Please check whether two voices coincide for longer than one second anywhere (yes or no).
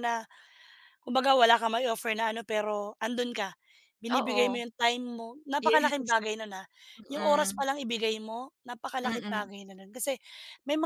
no